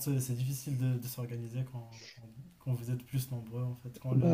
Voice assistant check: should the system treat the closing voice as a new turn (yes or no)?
no